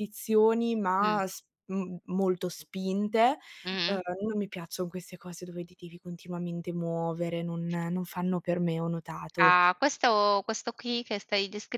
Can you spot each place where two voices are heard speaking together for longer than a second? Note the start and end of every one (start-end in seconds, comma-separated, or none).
none